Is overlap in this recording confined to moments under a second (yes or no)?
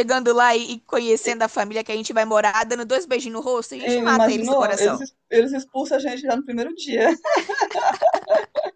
no